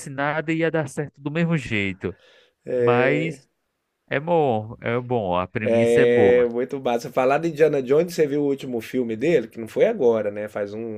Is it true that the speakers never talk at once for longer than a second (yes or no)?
yes